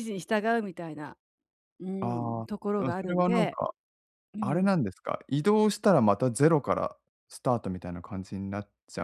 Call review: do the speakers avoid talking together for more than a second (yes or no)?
no